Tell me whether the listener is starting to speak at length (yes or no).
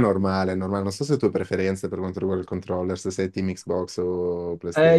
yes